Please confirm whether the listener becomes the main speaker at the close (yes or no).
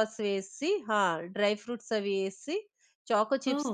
no